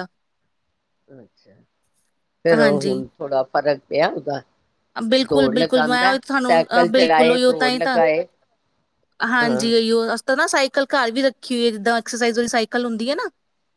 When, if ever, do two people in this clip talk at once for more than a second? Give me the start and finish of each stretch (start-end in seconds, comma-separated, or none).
5.3-8.0